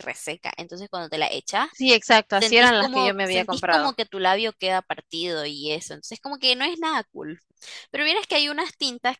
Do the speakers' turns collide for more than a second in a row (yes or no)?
yes